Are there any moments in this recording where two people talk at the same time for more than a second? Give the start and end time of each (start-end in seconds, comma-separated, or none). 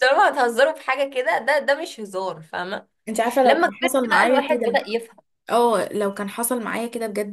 3.4-4.8